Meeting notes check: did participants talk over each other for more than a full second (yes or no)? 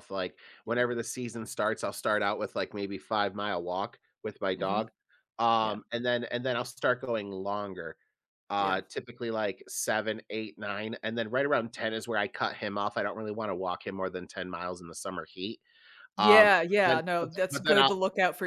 yes